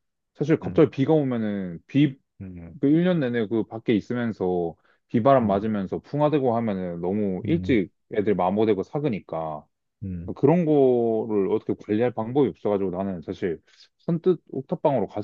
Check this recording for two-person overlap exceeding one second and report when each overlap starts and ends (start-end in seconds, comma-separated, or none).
none